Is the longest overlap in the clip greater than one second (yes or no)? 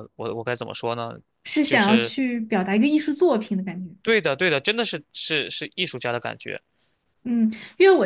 no